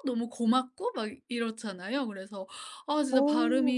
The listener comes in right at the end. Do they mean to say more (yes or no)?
no